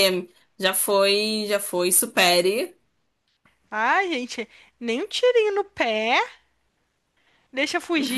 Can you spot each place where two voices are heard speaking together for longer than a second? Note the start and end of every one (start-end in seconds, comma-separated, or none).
none